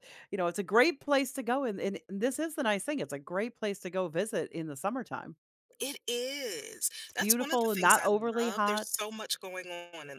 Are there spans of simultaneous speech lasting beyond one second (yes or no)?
yes